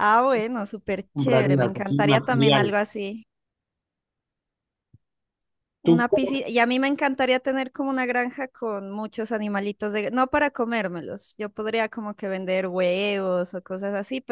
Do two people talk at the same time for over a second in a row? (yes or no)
yes